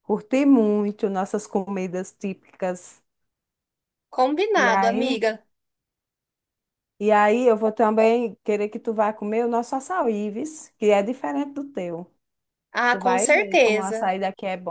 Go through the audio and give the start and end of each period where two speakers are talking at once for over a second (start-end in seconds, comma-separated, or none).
12.9-14.1